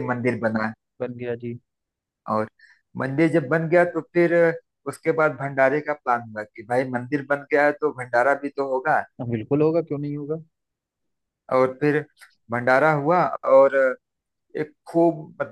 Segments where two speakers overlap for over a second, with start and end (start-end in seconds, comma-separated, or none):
none